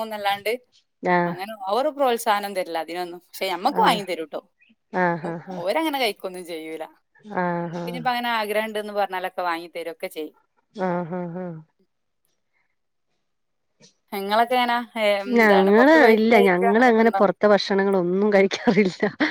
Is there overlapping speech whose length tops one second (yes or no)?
yes